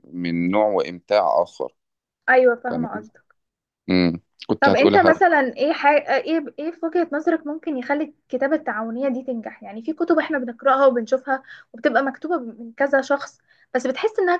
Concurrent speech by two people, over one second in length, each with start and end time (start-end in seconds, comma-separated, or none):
none